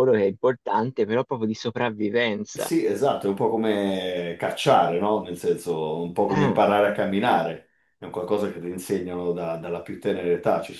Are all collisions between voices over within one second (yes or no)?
yes